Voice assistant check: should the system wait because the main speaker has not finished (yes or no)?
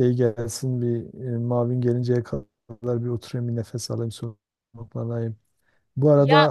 yes